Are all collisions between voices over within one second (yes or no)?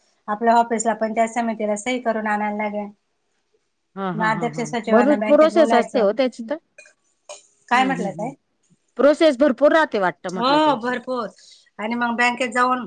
no